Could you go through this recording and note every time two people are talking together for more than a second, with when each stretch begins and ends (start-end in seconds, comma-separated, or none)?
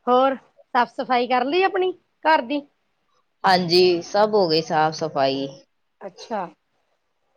none